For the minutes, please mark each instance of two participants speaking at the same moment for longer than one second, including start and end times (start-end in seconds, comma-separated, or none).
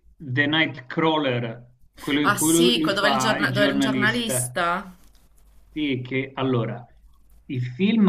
2.2-4.5